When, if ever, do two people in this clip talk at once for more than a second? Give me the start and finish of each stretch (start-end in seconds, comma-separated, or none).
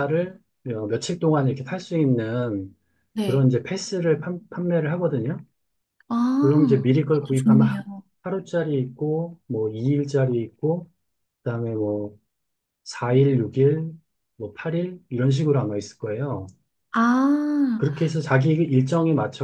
6.4-7.8